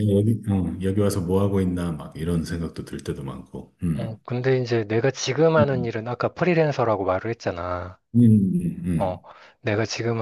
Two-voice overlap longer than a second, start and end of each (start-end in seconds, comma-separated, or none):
none